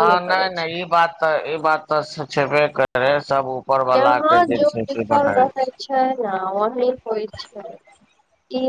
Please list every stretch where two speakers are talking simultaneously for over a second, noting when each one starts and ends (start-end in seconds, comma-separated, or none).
3.9-5.7